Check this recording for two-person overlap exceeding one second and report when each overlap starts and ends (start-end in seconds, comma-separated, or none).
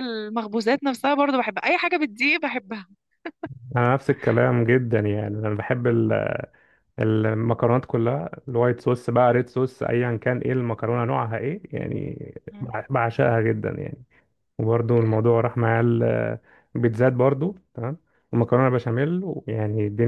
none